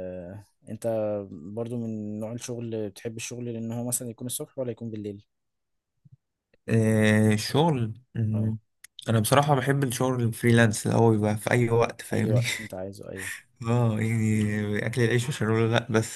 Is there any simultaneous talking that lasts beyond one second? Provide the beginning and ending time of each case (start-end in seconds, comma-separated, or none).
none